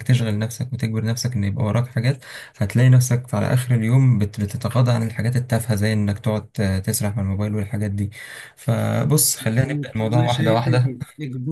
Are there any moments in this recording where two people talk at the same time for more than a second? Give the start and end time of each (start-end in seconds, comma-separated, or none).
9.4-11.0